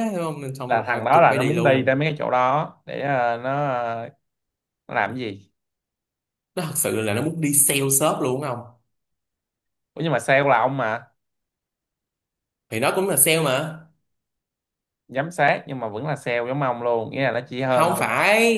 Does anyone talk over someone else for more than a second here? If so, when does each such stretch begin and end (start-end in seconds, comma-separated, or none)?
0.7-1.9